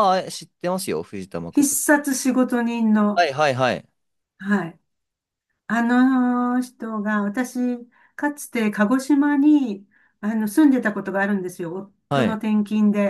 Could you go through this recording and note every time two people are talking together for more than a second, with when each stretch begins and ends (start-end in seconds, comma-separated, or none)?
none